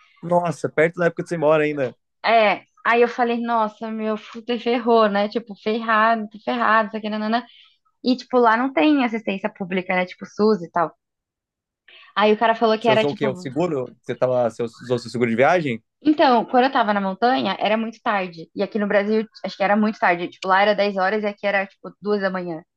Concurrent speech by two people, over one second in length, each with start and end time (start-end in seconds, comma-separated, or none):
none